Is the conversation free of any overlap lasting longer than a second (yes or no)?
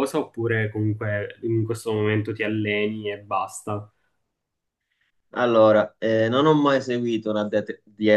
yes